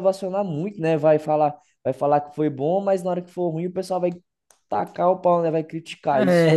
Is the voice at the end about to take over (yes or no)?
yes